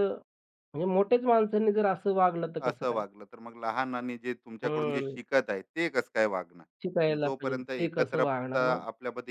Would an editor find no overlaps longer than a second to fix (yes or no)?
no